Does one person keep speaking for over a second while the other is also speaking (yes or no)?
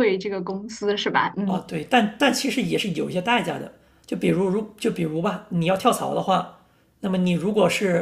no